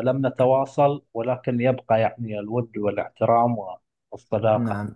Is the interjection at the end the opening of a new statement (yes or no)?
yes